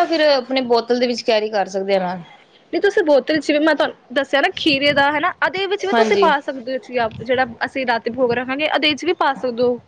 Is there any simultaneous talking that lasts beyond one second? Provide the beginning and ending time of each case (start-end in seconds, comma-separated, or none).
none